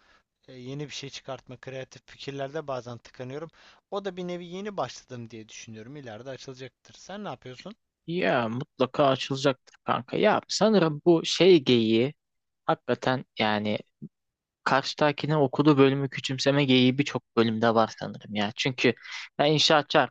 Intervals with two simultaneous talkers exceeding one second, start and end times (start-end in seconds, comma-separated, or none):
none